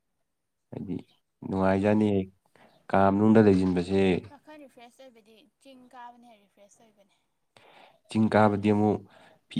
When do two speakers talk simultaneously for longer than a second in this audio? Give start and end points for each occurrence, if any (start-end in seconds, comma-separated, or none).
none